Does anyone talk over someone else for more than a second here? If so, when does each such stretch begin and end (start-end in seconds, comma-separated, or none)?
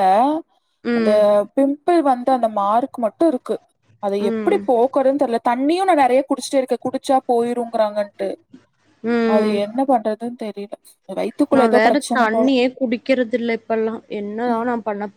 none